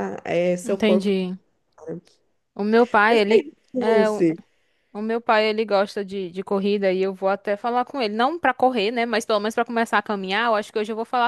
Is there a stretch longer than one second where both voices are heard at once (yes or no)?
no